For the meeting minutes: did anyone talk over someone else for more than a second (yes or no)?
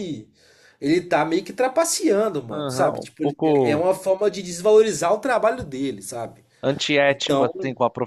yes